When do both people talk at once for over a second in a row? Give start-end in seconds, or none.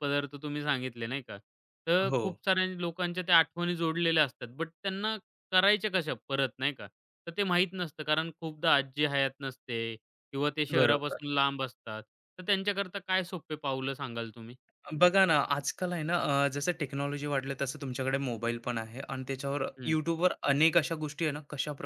none